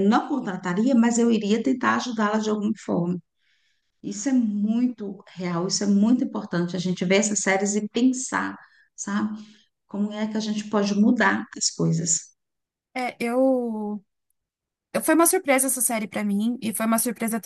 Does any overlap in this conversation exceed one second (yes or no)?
no